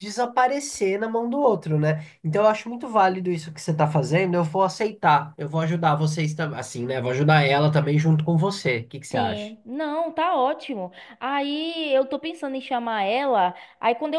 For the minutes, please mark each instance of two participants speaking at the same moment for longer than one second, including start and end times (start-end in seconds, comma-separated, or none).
none